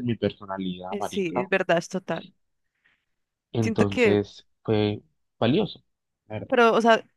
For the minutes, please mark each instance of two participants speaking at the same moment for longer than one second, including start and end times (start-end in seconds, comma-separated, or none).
none